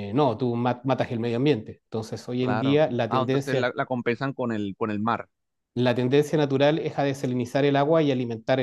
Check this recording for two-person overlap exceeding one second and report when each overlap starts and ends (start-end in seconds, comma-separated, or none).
2.4-3.7